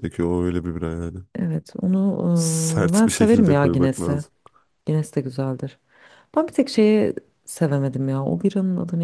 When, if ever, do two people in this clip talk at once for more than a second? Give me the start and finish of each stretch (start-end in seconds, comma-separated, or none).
2.4-4.2